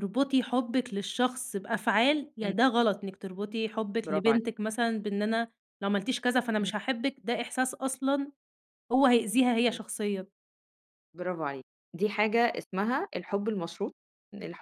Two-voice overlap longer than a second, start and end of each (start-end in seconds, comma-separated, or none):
none